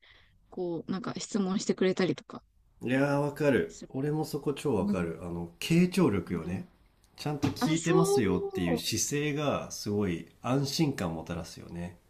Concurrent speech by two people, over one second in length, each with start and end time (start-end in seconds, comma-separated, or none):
7.6-8.8